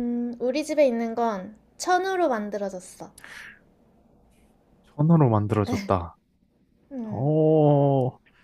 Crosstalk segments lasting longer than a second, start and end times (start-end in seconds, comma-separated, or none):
none